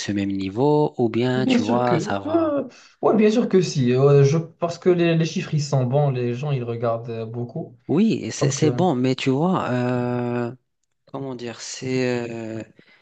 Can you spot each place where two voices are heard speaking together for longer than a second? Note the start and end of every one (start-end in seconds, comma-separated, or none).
1.4-2.6